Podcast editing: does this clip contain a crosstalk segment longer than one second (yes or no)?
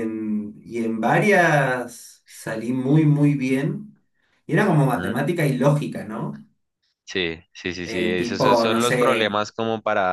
yes